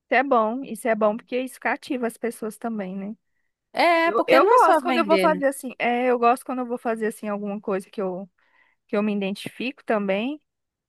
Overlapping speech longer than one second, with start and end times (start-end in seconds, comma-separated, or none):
4.0-5.4